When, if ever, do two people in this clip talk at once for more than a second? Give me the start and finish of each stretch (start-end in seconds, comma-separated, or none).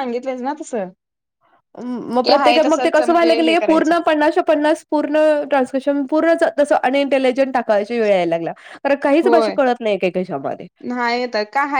2.2-3.9